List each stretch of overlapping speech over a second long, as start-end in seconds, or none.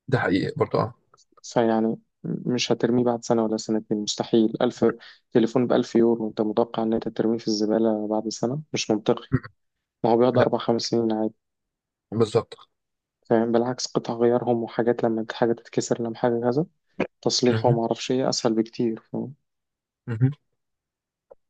none